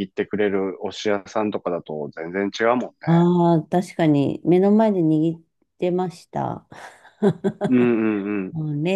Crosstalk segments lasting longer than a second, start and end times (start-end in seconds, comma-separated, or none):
none